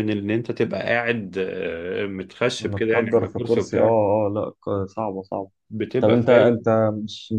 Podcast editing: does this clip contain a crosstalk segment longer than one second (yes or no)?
yes